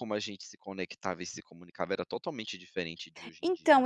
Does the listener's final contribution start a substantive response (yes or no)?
yes